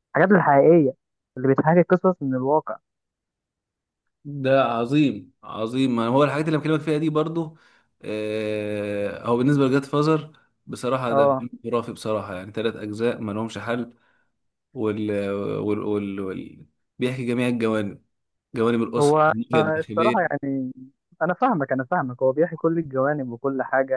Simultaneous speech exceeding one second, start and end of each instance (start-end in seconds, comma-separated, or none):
19.0-20.4